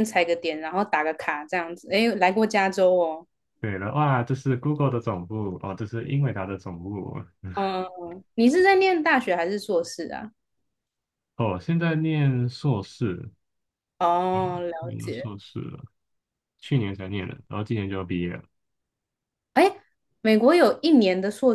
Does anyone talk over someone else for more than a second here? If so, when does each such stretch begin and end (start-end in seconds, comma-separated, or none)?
none